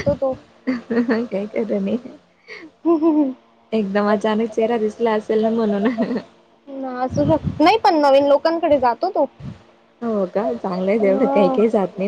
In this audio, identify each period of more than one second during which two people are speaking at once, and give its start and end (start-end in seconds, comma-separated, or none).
none